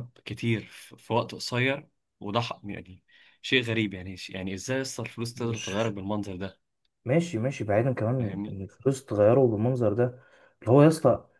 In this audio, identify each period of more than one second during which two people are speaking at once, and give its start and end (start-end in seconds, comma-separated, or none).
none